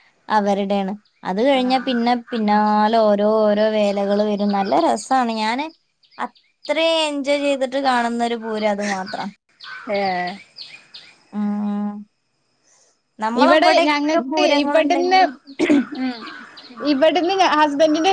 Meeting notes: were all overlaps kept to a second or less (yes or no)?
no